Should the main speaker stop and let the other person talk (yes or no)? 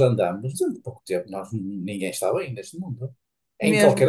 no